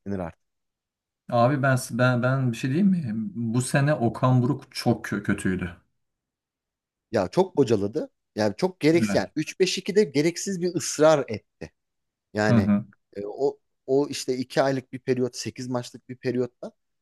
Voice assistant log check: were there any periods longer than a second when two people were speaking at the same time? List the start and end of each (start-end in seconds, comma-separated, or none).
none